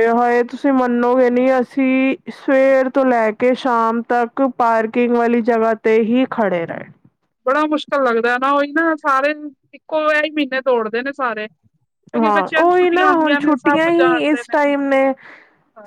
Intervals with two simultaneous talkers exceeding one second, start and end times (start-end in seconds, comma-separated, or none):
12.2-14.4